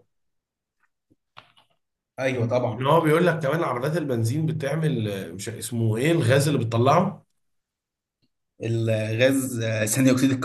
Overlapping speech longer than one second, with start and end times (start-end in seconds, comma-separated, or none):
none